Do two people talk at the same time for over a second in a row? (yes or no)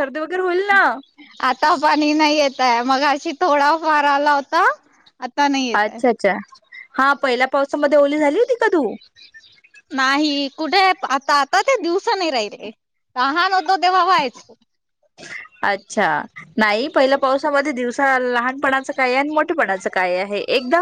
no